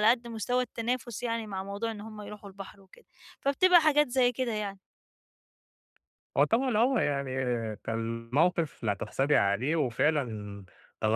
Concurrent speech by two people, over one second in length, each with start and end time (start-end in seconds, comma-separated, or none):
none